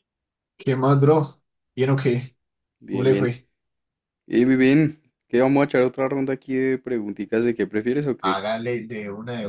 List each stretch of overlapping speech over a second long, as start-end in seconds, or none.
none